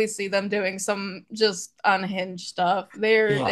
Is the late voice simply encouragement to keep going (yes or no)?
no